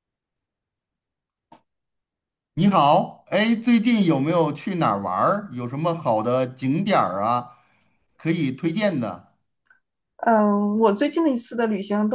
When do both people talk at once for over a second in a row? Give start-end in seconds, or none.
none